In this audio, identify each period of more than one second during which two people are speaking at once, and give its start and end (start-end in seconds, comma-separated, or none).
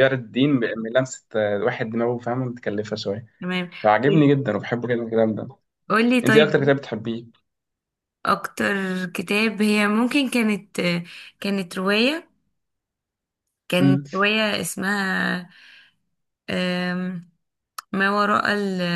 none